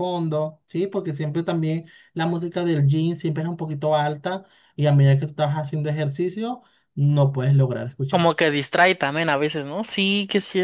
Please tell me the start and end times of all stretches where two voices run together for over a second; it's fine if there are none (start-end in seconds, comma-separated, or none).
none